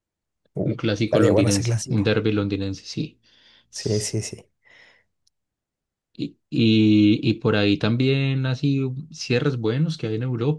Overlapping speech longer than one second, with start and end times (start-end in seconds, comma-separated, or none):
0.6-2.1